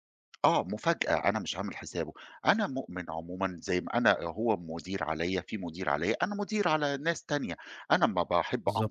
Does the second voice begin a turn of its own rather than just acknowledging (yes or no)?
no